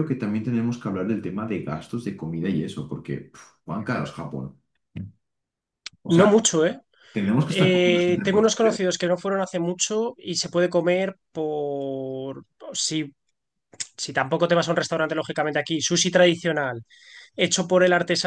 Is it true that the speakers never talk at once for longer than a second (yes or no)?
no